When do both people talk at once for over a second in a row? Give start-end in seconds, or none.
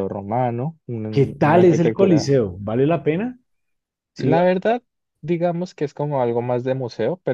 1.1-2.3